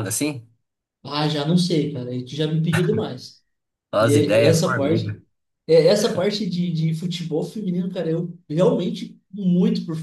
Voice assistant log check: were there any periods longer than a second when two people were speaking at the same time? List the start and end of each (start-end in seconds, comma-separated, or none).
4.0-5.2